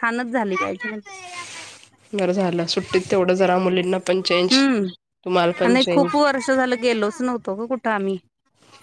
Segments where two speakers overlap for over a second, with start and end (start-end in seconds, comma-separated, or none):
none